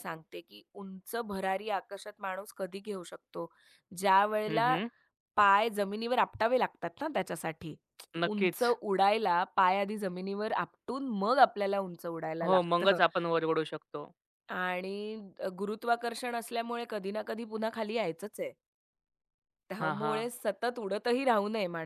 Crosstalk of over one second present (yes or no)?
no